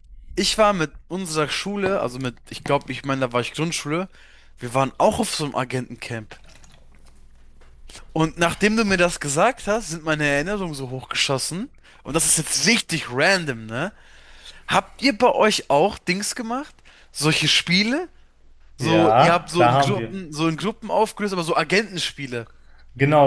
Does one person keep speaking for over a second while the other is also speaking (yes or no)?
yes